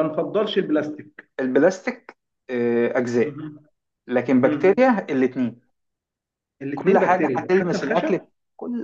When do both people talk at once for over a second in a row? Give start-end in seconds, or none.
6.7-8.1